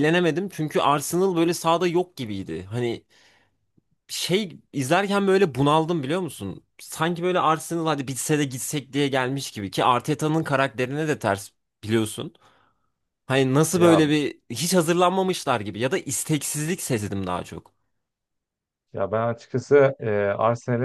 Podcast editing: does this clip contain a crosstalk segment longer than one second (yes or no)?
no